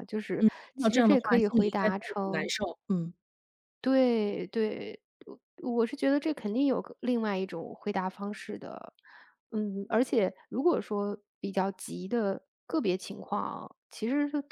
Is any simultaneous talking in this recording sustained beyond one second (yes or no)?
yes